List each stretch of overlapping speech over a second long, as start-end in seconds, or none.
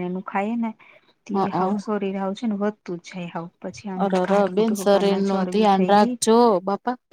4.0-6.1